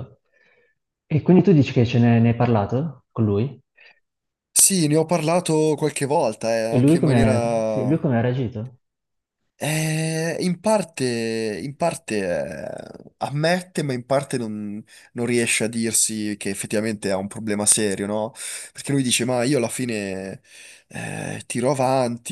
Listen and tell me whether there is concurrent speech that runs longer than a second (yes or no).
yes